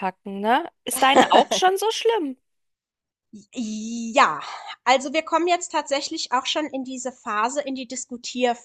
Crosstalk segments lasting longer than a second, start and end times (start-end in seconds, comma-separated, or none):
none